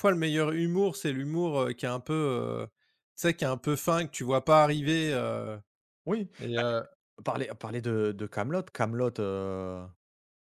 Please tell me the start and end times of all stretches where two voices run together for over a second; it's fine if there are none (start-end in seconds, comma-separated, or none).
none